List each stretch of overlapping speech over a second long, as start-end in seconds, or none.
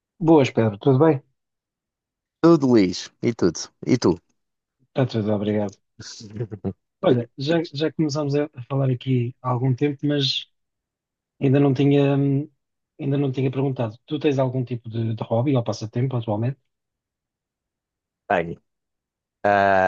none